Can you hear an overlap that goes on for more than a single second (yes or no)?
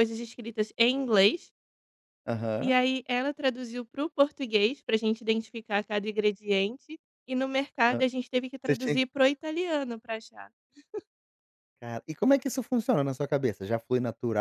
no